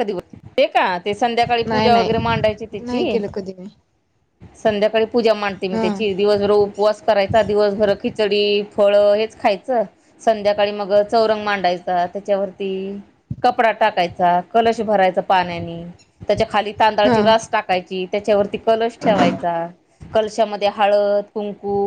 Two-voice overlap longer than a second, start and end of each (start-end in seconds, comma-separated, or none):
1.7-3.2